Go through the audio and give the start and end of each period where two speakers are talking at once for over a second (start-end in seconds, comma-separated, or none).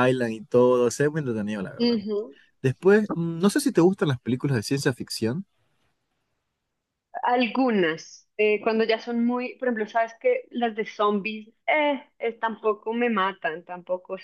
none